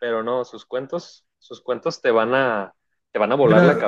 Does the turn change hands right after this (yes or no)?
yes